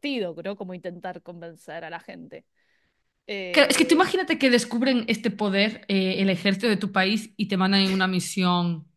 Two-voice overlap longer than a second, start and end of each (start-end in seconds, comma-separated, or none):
none